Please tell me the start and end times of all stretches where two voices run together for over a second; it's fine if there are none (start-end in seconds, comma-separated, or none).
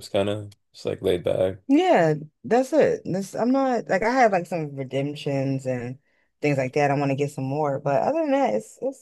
none